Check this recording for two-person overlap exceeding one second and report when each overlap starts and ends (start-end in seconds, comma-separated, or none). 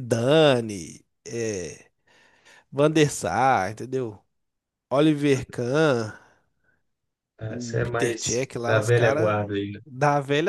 7.5-9.4